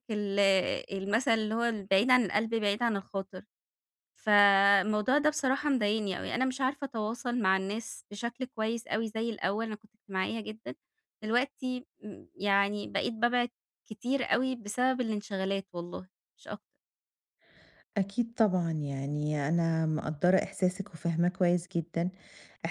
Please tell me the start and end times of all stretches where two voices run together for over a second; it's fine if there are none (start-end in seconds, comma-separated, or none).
none